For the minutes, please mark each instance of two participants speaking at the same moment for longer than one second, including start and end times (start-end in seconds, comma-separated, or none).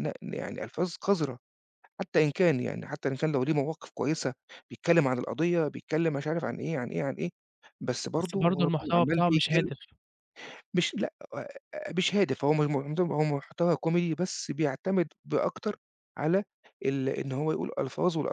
8.2-9.7